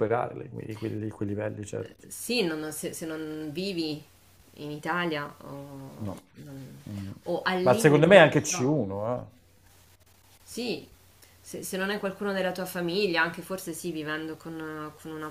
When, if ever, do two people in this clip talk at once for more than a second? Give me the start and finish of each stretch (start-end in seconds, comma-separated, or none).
7.6-8.8